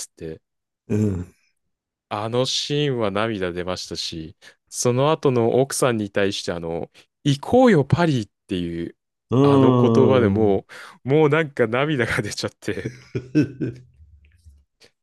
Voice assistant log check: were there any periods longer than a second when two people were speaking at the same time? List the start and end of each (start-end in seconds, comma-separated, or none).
9.4-10.6